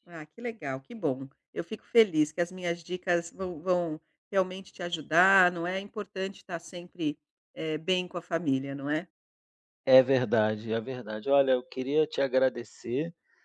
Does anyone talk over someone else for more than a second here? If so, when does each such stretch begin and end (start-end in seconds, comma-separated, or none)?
none